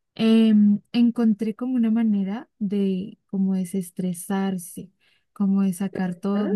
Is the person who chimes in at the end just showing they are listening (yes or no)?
yes